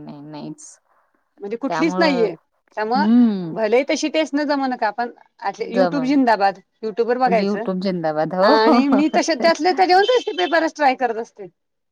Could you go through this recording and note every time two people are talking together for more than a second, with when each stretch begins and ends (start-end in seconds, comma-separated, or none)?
7.1-8.5